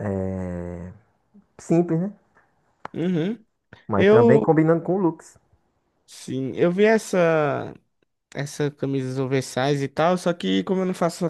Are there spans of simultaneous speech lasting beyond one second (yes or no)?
no